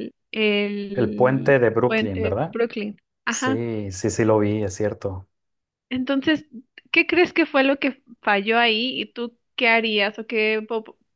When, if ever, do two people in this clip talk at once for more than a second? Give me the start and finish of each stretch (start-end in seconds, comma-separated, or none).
0.9-2.6